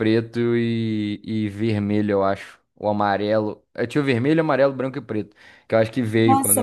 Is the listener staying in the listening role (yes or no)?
no